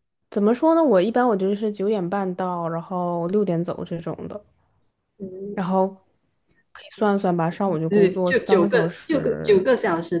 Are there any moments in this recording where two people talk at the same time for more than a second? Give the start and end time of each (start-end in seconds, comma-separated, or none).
7.9-9.7